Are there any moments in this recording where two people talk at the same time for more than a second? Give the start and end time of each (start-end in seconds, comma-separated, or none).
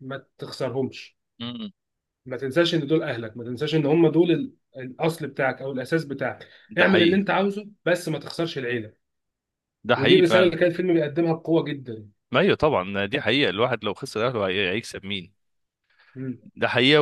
none